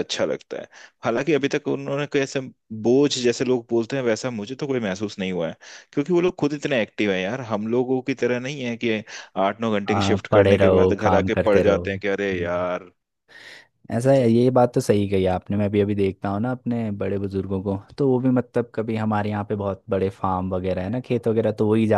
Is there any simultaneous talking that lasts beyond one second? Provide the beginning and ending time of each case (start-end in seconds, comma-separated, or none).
9.9-12.7